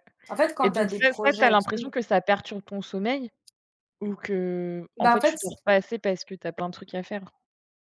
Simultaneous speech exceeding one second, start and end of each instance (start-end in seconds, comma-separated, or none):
0.6-1.9